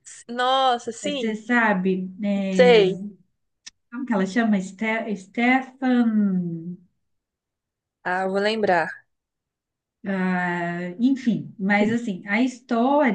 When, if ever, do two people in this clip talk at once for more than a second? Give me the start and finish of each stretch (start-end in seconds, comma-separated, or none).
none